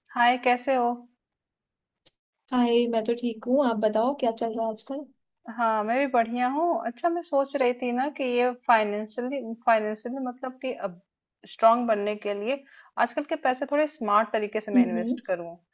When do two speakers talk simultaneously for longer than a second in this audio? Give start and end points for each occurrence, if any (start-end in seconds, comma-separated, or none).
none